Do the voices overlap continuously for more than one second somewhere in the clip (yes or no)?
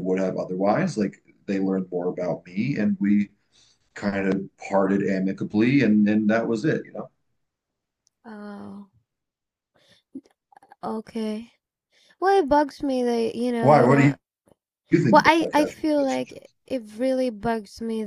yes